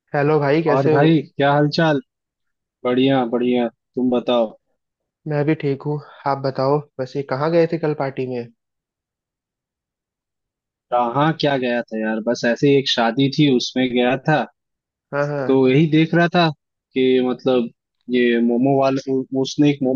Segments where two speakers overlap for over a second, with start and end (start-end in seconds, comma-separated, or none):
none